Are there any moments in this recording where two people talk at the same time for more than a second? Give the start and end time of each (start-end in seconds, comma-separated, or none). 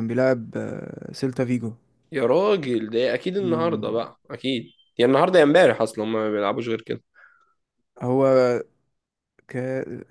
none